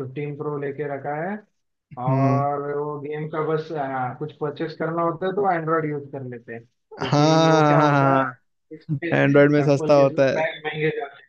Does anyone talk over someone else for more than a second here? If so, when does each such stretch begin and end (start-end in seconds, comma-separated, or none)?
7.0-8.2, 9.1-10.4